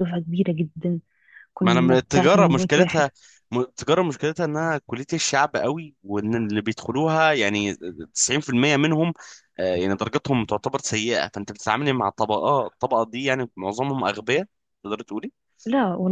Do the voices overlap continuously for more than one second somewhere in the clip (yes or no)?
yes